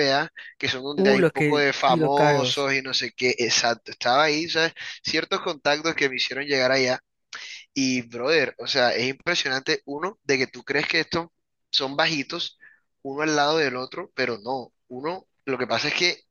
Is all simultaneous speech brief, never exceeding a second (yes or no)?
no